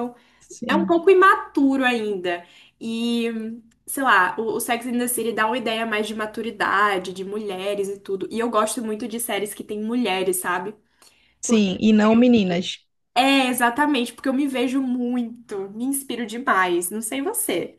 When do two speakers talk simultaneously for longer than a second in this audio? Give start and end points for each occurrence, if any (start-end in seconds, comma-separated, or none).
none